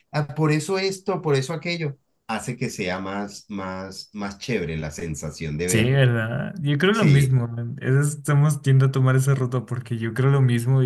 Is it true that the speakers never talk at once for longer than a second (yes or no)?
yes